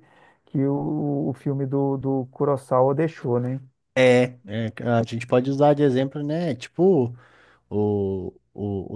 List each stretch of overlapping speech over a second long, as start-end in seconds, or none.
none